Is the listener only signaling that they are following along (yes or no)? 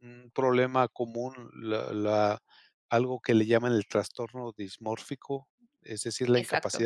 yes